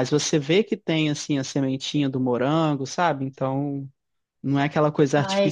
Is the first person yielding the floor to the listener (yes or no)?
no